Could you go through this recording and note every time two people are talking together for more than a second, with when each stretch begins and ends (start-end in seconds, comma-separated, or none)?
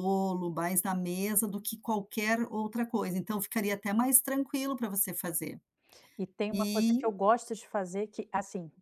none